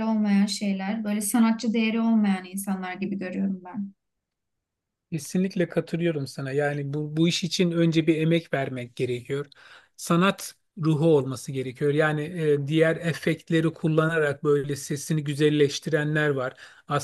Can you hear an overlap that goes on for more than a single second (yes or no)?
no